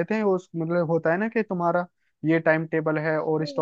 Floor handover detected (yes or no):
yes